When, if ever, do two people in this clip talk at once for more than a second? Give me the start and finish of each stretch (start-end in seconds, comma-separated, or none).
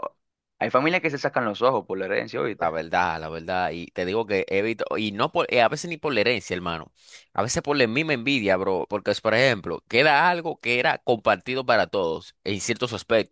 none